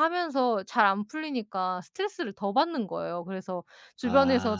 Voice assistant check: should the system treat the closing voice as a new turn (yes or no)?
no